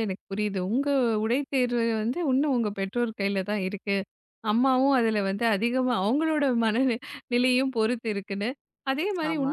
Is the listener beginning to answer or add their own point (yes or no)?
no